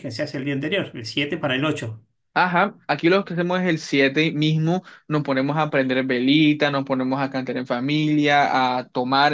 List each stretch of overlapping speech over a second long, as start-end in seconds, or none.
none